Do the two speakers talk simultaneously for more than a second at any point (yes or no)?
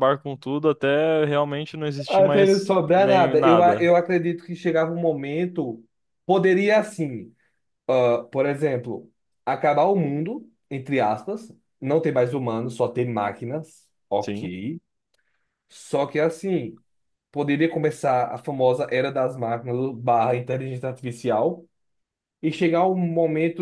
yes